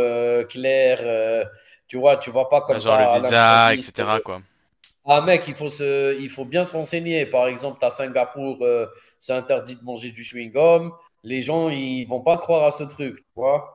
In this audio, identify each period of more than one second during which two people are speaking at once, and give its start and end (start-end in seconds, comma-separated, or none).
2.6-4.0